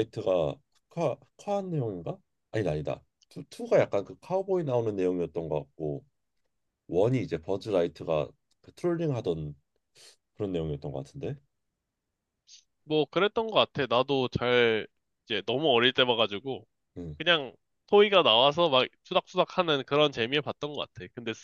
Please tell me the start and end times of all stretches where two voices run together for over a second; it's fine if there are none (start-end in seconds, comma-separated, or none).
none